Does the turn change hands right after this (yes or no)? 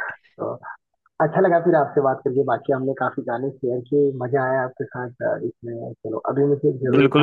yes